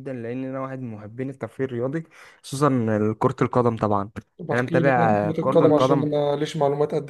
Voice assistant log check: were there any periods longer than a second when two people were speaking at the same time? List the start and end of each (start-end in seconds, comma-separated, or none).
4.5-6.1